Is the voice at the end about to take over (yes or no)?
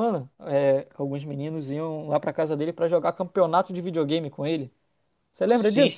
yes